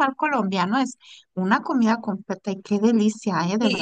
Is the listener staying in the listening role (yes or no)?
no